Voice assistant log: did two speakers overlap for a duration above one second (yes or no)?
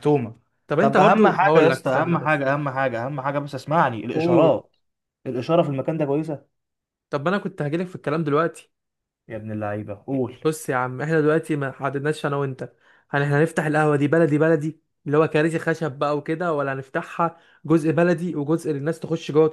yes